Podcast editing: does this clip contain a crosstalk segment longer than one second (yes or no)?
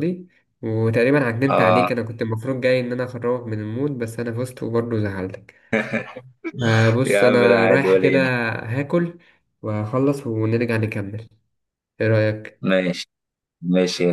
yes